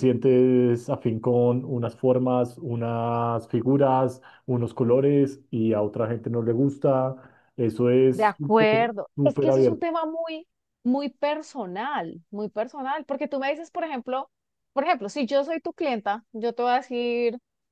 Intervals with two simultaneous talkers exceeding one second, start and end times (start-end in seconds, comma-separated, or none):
8.1-9.9